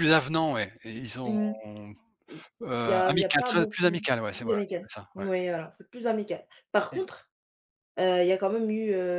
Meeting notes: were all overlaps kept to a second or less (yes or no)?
no